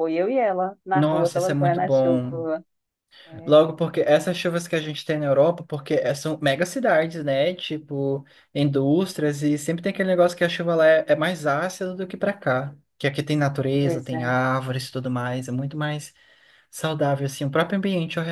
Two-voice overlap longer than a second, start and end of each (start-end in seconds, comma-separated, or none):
0.9-2.4